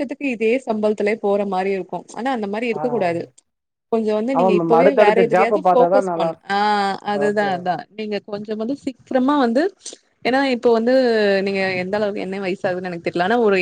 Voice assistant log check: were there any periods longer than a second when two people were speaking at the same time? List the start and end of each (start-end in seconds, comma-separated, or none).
4.4-6.3